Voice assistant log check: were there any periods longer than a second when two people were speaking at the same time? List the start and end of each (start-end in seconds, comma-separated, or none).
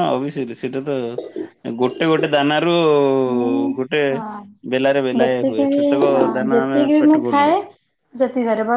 4.7-7.5